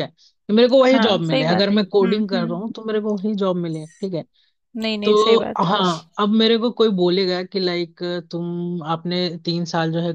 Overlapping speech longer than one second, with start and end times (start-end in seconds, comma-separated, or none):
0.9-2.6